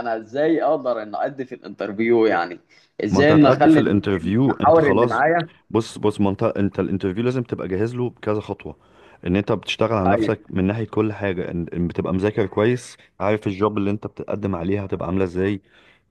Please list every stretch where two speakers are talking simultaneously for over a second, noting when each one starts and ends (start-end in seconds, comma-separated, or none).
3.1-5.2